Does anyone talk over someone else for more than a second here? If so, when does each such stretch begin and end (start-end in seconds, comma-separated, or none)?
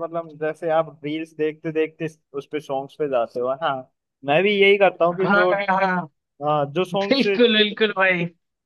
none